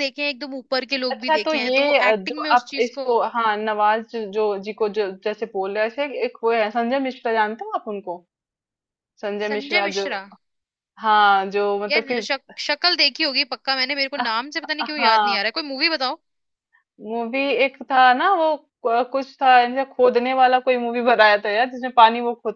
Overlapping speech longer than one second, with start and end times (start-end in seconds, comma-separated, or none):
1.1-3.1